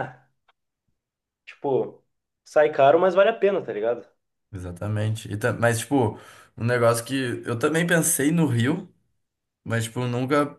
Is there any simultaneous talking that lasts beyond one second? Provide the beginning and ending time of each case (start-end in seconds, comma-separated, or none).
none